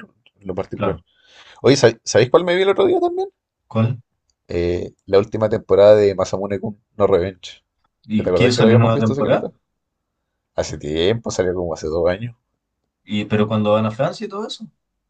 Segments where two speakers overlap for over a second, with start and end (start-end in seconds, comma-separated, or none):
8.2-9.5